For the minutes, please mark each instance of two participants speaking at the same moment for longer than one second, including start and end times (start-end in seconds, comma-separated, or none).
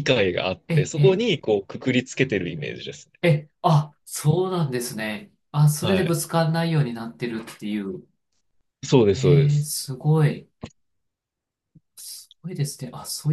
none